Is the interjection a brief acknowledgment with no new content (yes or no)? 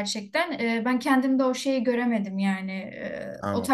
yes